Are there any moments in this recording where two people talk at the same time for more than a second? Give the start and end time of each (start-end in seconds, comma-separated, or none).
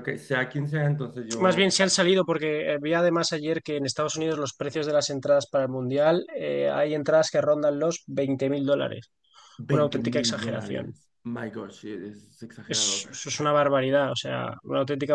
9.7-10.9